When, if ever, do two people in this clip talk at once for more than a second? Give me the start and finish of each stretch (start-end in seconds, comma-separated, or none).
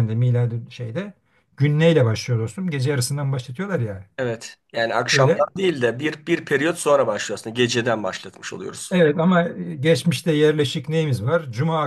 none